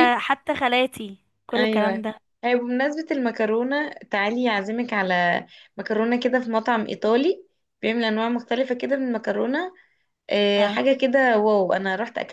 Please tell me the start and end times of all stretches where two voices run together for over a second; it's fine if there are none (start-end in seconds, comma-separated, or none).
none